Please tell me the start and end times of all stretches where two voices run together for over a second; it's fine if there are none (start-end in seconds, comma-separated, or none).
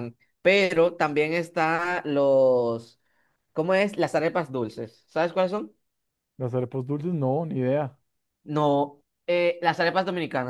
none